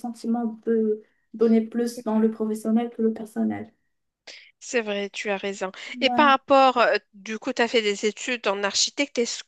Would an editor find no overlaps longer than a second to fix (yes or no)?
yes